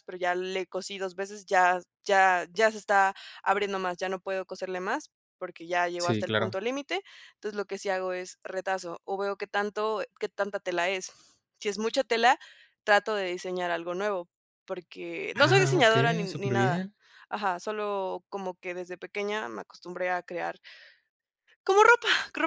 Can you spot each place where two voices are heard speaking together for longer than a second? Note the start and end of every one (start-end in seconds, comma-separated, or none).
15.3-16.9